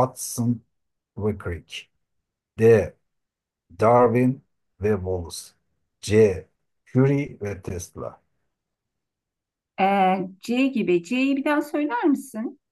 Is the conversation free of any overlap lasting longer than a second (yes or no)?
yes